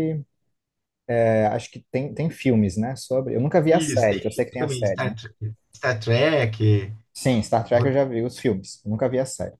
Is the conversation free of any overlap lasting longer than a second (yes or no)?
no